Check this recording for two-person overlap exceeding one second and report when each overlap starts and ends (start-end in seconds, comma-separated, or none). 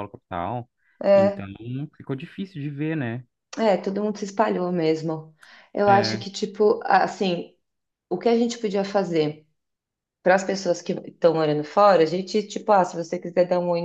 none